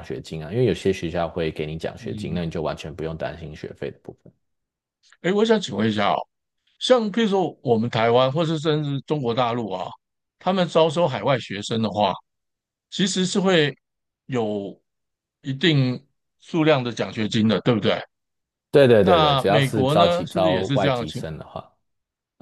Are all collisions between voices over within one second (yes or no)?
no